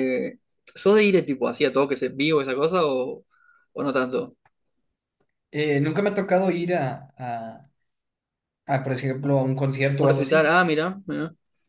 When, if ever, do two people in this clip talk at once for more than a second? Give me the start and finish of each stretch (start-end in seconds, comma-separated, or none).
none